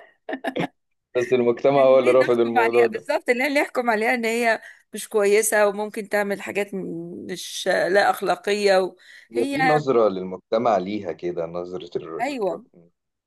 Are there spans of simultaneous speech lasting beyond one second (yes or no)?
yes